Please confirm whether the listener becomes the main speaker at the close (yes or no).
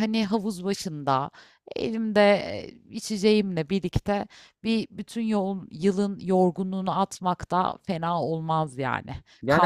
yes